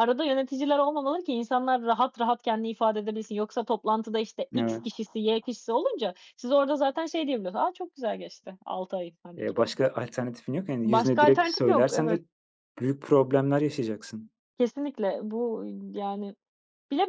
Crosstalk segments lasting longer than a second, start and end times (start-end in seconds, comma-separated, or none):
10.8-12.2